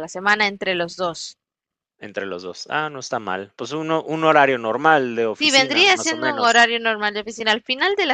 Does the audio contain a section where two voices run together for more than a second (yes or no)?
yes